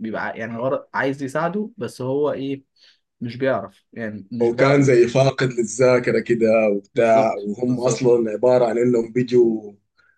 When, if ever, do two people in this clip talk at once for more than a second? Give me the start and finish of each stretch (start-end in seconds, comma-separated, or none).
6.9-8.2